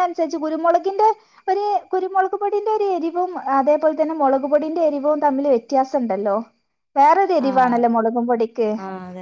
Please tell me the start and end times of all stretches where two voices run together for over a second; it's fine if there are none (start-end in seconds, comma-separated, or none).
7.5-8.7